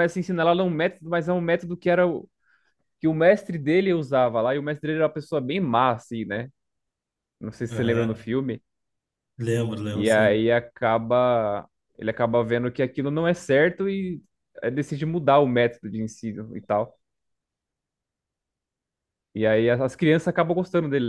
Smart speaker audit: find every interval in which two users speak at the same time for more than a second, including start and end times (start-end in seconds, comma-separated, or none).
none